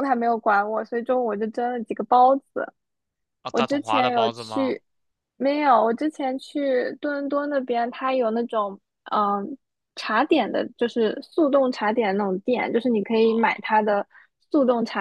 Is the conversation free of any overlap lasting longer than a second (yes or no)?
no